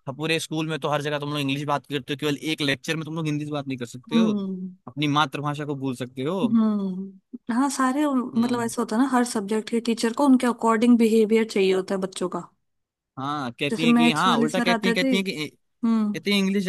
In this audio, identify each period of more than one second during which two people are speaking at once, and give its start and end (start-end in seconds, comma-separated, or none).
13.7-15.1